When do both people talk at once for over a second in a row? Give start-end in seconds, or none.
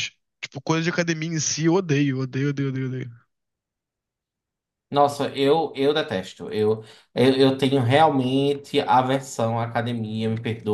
none